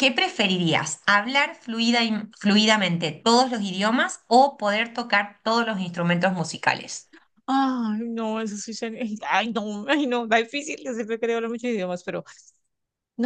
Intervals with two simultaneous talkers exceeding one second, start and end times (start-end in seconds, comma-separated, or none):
none